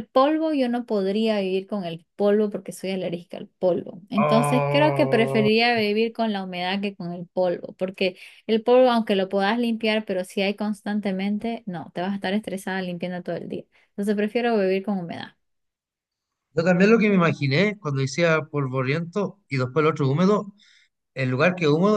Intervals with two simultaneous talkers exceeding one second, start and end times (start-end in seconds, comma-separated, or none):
4.2-5.5